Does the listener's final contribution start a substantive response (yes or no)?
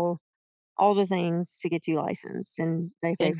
yes